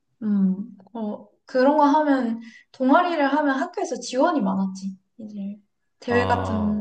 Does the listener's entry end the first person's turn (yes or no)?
no